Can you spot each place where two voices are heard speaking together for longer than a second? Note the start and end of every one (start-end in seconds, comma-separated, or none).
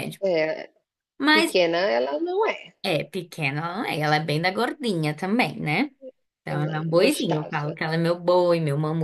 6.5-7.8